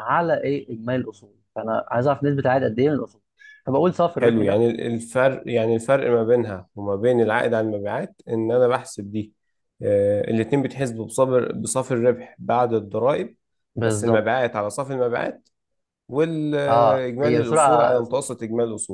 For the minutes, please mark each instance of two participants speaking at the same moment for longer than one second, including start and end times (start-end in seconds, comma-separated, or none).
16.7-18.3